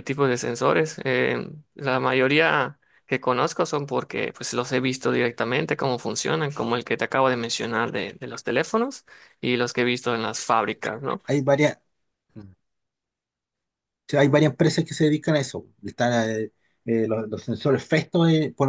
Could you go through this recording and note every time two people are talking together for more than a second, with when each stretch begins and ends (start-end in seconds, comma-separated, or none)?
none